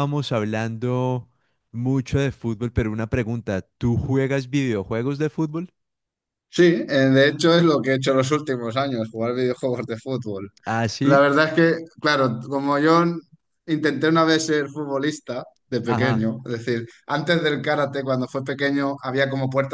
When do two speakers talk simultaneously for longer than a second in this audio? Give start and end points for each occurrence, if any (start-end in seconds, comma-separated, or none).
none